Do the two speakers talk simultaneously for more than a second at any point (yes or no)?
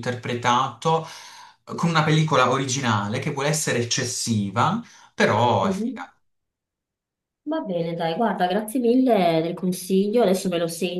no